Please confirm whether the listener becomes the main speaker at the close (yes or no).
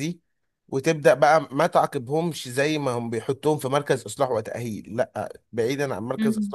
no